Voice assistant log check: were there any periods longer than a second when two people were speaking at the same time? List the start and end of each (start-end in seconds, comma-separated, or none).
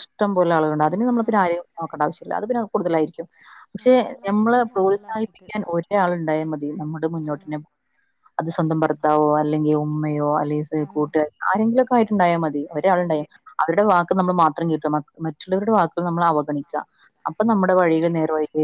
3.8-5.5